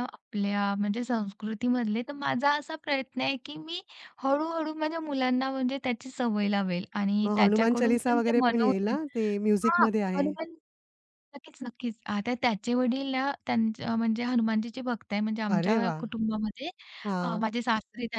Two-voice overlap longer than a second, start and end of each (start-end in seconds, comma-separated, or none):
7.2-9.0